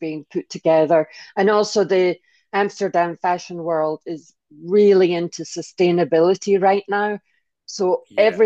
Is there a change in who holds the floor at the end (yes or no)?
no